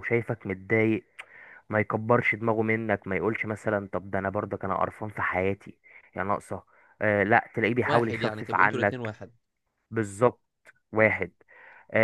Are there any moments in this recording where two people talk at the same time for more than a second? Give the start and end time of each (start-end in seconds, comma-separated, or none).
7.9-9.1